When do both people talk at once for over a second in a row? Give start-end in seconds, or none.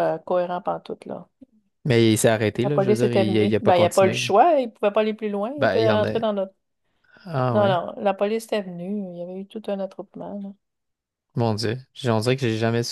2.6-4.3